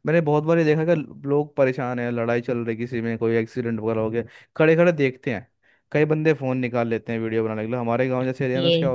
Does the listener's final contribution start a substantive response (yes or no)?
no